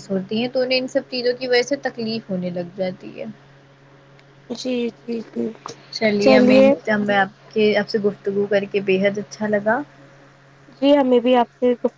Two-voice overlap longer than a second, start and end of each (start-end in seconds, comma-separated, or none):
none